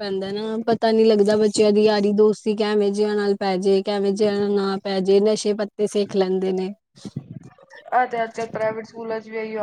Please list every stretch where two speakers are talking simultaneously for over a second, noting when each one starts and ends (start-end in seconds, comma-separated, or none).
none